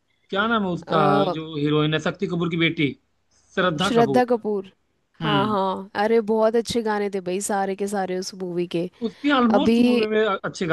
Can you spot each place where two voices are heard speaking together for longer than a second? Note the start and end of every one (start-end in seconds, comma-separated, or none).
none